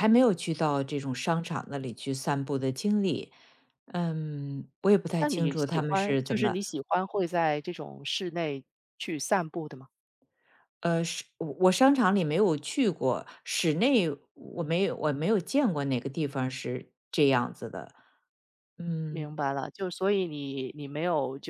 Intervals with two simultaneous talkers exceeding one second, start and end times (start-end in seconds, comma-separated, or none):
5.2-6.6